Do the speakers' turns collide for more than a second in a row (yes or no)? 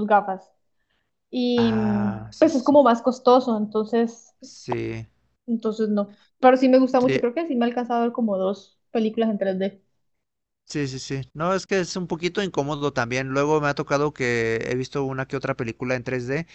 yes